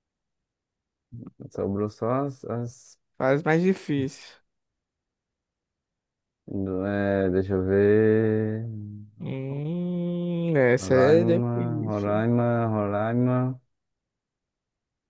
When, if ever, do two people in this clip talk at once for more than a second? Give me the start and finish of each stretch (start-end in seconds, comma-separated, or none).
10.8-12.2